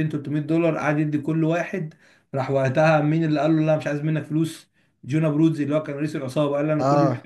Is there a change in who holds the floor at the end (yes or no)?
no